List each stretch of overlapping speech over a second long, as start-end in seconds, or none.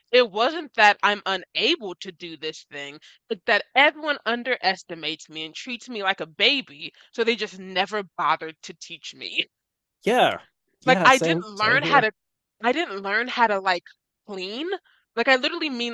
10.8-12.1